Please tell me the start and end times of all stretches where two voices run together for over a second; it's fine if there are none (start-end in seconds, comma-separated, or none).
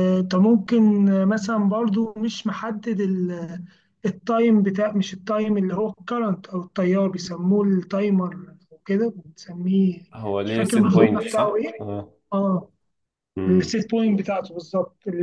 10.4-11.8